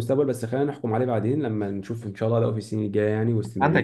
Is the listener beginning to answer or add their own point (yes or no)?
yes